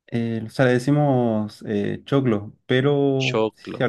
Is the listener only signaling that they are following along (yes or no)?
yes